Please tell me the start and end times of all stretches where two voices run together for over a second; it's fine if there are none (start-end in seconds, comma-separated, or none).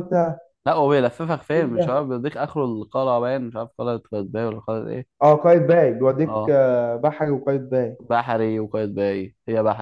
none